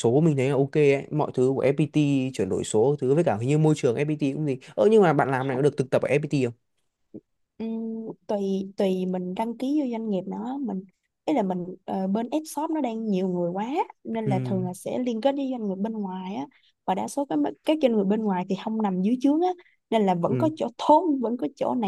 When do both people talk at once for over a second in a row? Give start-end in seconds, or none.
none